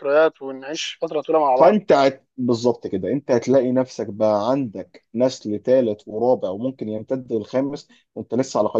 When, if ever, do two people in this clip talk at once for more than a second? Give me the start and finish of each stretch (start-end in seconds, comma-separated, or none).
none